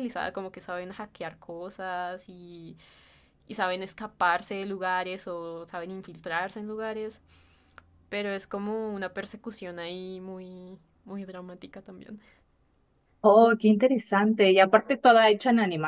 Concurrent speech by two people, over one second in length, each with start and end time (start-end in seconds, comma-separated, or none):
none